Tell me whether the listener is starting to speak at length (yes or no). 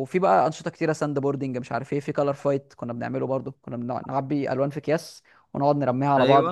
no